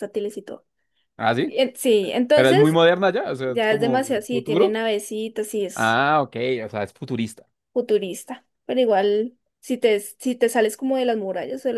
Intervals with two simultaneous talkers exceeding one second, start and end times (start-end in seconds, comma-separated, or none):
3.5-4.8